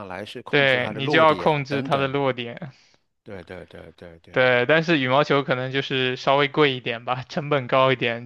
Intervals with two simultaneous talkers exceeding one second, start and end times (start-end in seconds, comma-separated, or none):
0.5-2.2